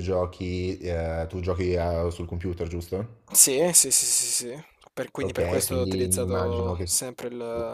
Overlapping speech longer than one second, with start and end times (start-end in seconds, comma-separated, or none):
5.2-6.9